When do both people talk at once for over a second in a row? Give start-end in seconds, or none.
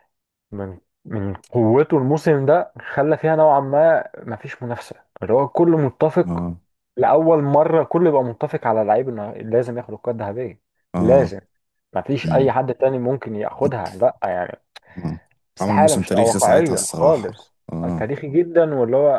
15.6-17.4